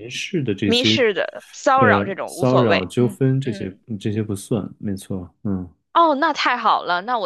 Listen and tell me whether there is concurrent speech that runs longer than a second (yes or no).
yes